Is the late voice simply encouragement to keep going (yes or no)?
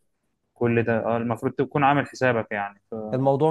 no